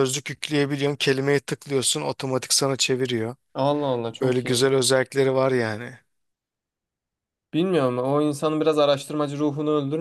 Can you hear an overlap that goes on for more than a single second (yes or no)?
no